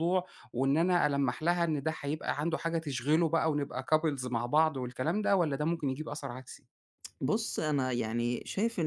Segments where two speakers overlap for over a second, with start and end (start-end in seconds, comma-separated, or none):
none